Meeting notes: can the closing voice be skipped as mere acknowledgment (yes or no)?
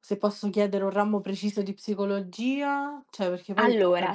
no